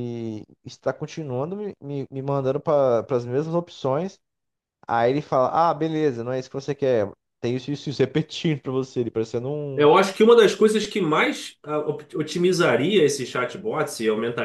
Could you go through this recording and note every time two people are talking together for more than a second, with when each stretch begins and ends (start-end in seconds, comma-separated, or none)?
none